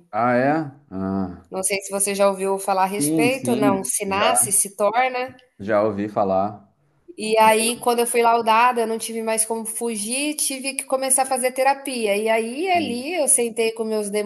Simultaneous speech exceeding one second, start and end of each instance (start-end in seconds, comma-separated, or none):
2.9-4.6